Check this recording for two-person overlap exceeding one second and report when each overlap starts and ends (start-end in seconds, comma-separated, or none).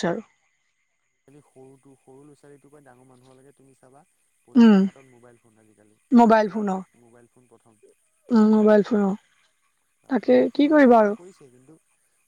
none